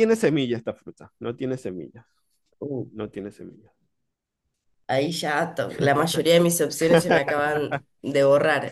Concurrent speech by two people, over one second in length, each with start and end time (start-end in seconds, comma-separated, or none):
none